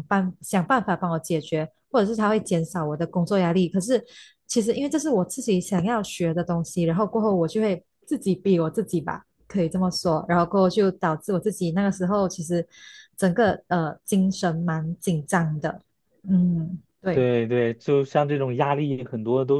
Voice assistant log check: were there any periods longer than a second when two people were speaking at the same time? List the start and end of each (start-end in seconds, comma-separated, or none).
none